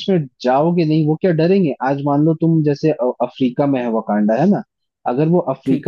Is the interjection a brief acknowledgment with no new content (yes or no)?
yes